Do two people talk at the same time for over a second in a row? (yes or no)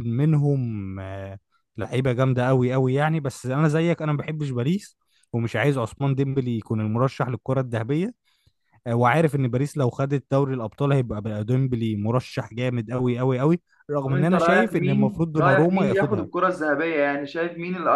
yes